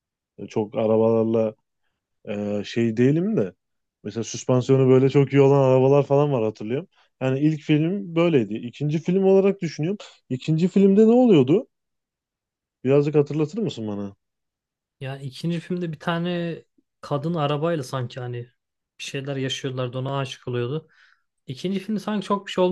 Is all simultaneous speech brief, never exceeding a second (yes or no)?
yes